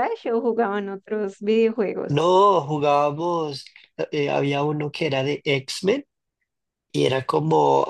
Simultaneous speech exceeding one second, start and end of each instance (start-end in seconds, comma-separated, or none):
none